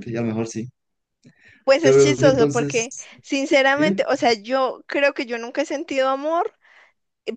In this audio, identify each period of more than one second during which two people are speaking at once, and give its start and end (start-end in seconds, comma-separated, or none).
1.8-3.1